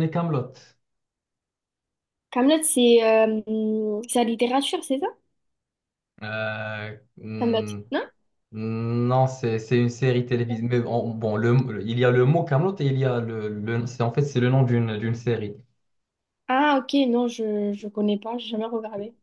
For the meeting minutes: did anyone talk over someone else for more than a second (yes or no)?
no